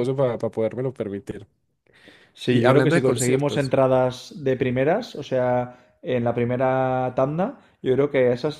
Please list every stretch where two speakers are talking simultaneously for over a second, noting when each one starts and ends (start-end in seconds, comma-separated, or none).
2.5-3.7